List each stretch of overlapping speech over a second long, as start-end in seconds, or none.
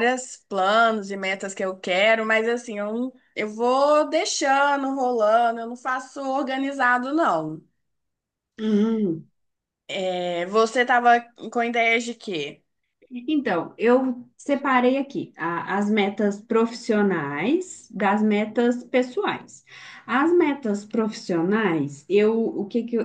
none